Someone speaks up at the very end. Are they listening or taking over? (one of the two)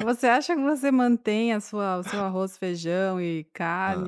listening